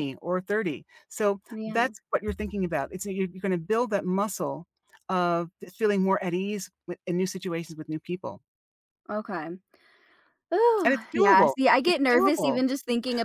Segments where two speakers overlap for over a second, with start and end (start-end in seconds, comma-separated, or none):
10.8-12.6